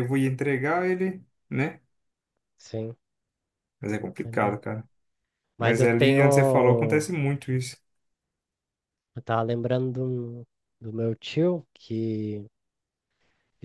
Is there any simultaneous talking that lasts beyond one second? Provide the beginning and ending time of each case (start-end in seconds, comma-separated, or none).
5.6-6.9